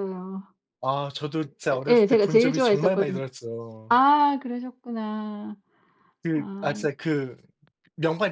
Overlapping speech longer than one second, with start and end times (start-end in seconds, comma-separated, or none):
1.7-3.2